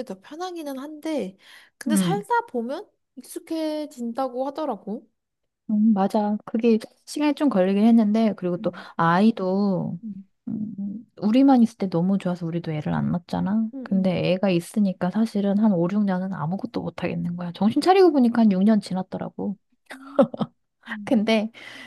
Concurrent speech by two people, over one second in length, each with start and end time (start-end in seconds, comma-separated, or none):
none